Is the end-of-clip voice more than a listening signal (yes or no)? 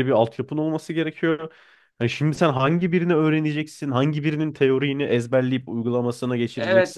yes